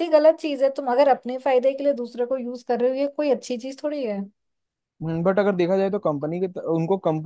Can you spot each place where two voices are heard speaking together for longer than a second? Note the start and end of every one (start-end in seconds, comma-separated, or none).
none